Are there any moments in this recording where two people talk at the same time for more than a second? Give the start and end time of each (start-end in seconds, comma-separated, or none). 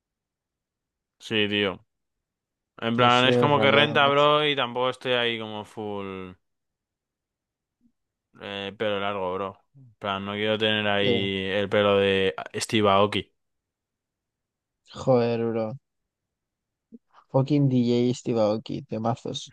2.9-4.3